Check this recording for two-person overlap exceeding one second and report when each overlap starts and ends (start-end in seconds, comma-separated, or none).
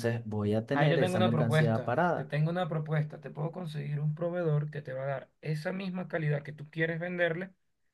0.7-2.3